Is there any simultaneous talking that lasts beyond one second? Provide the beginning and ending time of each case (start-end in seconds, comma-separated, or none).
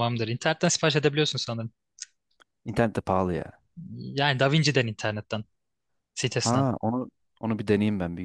none